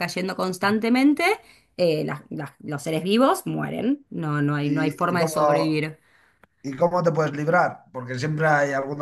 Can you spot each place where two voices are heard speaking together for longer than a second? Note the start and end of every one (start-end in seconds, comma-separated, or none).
4.6-5.9